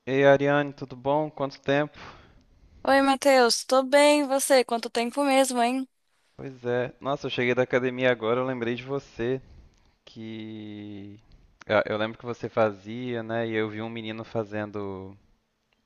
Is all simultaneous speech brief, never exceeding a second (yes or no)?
yes